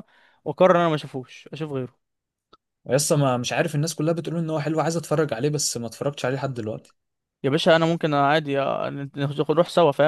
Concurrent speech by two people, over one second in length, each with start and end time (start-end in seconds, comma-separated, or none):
none